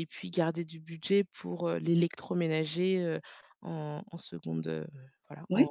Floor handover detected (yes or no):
yes